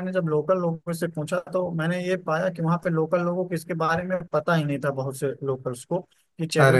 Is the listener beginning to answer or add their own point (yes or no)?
no